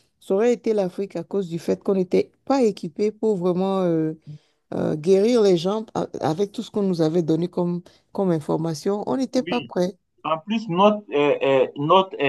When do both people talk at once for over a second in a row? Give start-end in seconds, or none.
none